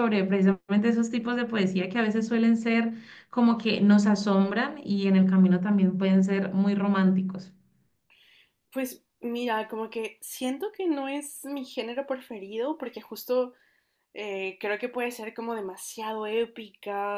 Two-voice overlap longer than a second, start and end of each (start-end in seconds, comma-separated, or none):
none